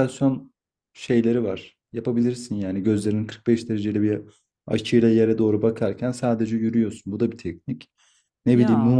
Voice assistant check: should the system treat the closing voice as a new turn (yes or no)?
no